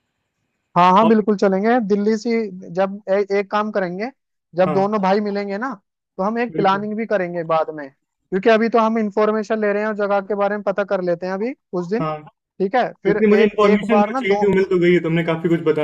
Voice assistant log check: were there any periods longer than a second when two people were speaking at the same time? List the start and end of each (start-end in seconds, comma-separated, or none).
12.8-14.4